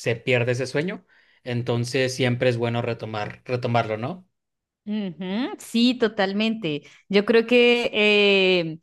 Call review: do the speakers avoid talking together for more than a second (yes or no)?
yes